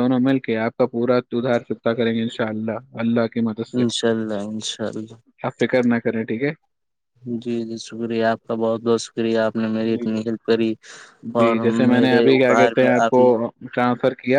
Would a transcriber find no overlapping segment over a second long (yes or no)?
no